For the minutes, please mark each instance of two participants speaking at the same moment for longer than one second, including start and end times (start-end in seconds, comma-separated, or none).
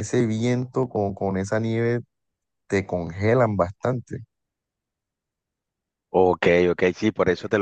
none